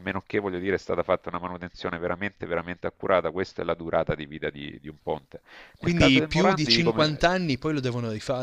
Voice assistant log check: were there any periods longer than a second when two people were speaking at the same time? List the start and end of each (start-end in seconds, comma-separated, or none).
5.8-7.4